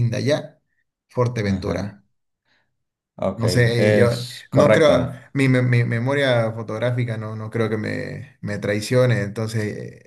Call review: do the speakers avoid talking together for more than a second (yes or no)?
no